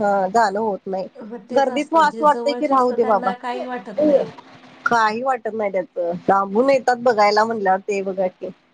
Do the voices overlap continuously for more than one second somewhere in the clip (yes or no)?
yes